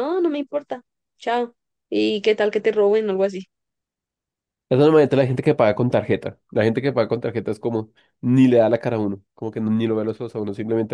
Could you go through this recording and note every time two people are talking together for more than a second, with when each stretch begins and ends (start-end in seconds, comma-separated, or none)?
none